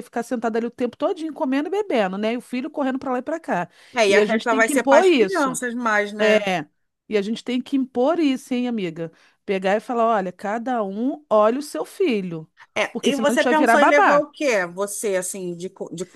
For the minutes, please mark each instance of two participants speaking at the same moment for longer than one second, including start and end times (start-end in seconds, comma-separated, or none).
4.1-5.6, 12.9-14.3